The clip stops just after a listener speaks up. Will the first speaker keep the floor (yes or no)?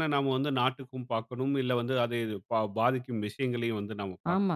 no